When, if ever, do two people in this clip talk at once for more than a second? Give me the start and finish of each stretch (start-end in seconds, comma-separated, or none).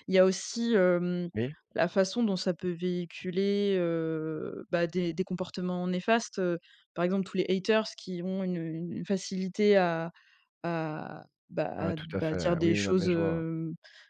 11.8-13.4